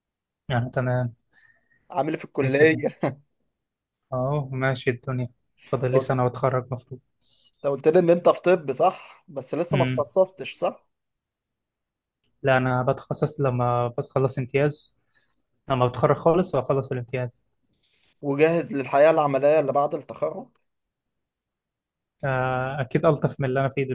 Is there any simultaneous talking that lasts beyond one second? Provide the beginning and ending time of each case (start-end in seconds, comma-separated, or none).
none